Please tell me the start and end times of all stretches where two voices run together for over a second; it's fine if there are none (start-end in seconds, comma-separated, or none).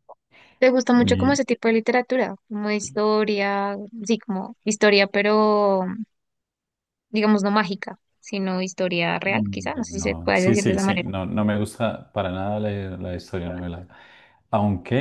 9.2-11.1